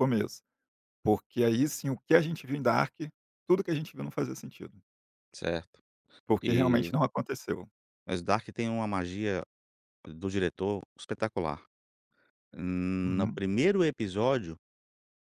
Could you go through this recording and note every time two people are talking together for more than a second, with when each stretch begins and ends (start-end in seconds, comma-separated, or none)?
none